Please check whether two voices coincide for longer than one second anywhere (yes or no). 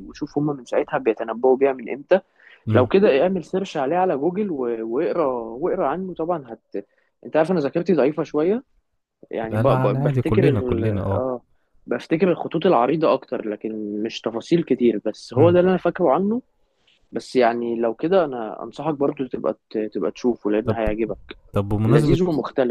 yes